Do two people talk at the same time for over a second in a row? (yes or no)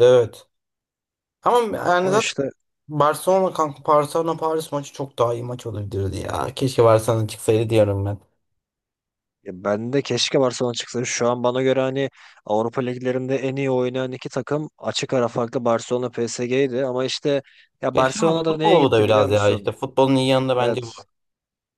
yes